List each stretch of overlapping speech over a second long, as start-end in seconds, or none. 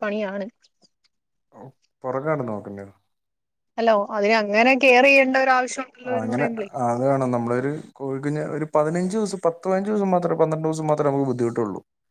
none